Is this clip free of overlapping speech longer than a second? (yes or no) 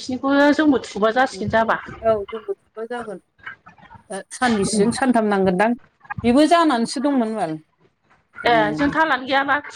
yes